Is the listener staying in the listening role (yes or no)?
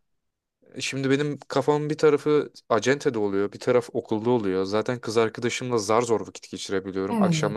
yes